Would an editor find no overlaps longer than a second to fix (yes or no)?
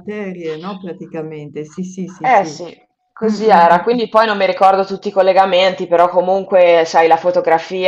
yes